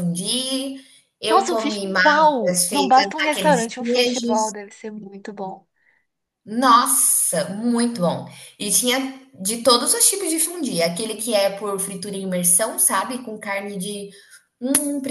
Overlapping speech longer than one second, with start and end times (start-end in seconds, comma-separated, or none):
1.3-4.5